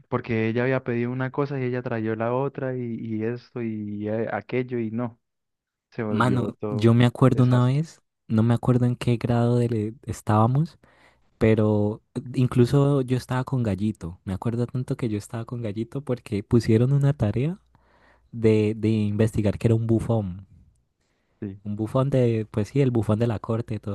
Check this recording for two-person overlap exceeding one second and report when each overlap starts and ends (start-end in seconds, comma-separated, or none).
6.1-7.9